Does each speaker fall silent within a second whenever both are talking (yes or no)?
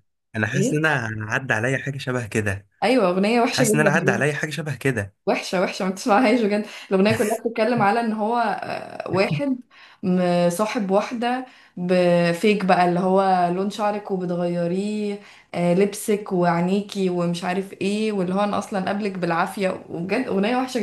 yes